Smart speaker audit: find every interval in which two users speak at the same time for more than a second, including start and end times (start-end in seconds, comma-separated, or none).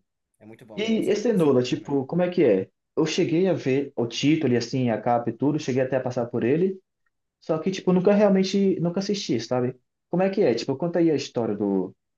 0.8-2.0